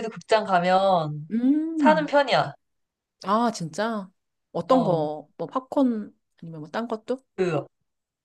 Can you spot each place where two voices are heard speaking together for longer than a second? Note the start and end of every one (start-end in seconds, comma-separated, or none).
none